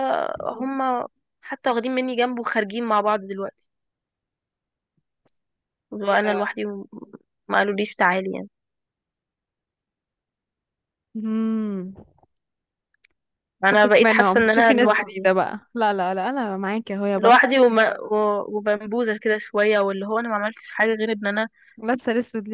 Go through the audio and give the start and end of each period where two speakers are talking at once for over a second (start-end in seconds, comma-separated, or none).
13.7-15.3